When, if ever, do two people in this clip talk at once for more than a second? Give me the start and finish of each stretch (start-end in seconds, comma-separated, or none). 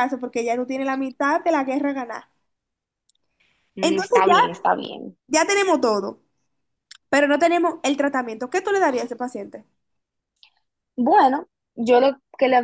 none